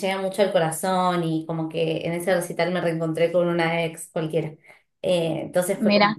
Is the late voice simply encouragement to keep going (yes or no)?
yes